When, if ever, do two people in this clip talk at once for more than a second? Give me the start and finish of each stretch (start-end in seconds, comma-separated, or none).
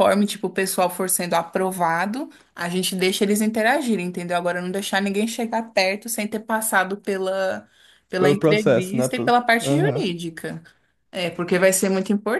8.2-10.1